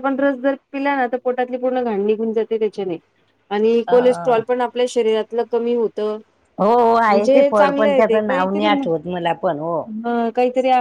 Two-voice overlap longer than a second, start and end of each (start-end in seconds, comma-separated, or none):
7.1-8.9